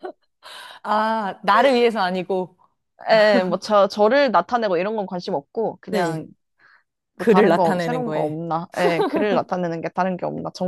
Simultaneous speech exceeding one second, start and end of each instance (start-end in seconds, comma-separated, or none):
7.2-8.4